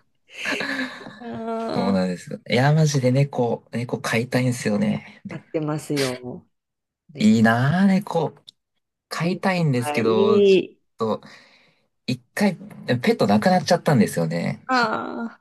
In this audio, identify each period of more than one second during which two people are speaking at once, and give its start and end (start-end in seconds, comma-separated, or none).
9.2-10.6